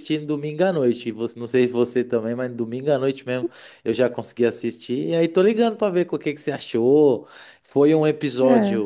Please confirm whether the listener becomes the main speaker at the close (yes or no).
no